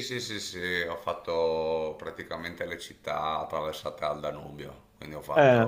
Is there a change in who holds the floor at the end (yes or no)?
no